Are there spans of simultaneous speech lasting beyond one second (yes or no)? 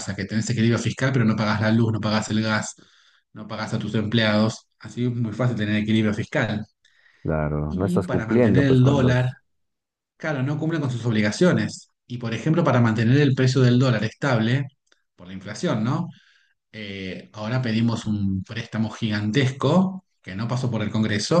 yes